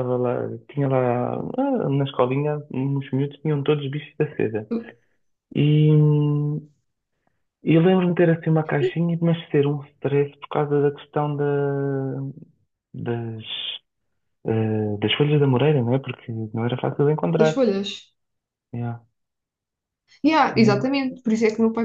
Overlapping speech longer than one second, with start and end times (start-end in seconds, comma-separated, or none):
none